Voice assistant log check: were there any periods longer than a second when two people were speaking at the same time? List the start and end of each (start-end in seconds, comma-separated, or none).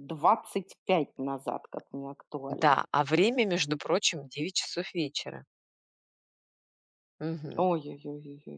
none